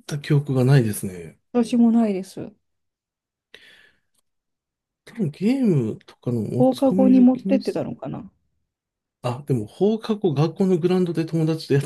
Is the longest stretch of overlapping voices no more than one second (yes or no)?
no